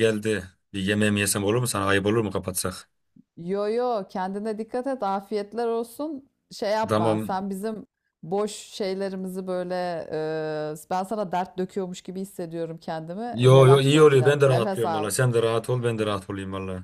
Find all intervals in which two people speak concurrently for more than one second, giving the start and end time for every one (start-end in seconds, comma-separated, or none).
13.3-15.1